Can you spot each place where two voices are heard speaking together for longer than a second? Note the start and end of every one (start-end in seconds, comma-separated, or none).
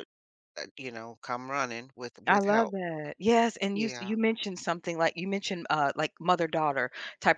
none